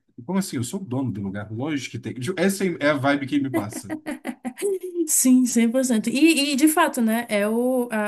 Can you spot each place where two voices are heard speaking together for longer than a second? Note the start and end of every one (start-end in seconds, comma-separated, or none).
none